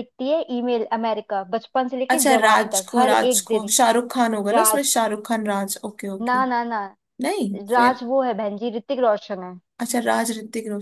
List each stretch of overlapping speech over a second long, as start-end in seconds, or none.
2.1-3.7